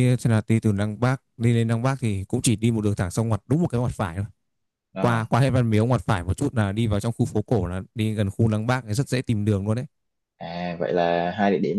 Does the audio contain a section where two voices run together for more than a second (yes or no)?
no